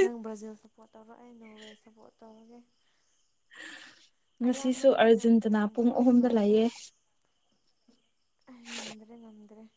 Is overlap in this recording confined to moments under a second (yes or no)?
no